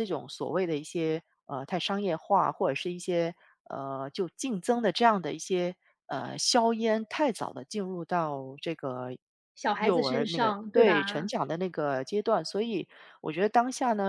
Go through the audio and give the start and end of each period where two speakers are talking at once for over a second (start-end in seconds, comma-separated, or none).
9.8-11.3